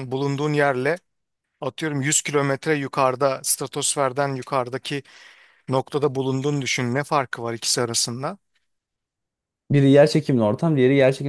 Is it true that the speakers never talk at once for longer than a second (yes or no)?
yes